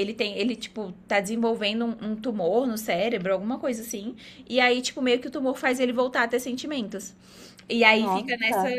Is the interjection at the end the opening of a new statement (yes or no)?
no